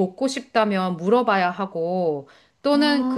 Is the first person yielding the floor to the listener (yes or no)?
no